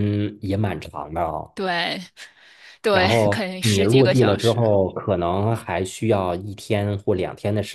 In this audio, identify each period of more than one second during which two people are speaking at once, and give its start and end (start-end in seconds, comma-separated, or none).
2.9-4.8